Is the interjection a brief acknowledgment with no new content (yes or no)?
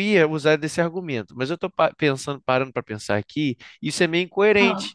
yes